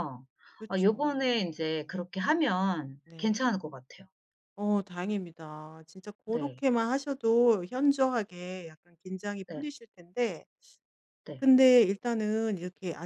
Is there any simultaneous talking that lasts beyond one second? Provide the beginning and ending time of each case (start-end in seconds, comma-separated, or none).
0.8-2.0